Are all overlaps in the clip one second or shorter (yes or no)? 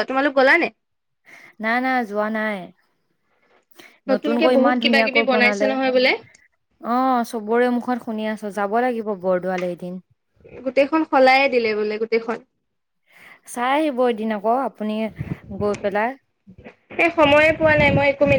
no